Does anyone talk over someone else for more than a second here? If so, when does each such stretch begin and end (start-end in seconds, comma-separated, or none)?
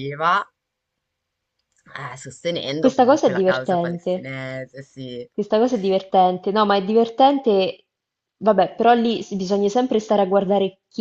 2.8-4.3